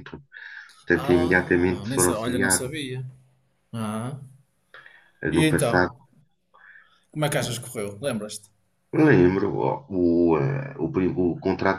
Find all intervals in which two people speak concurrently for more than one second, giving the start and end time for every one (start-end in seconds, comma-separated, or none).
0.9-2.6